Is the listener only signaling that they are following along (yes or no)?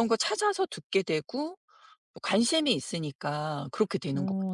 no